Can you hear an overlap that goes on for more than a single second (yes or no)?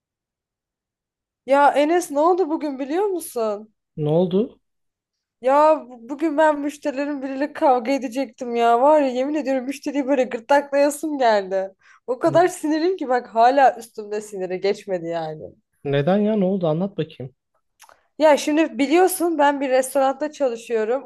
no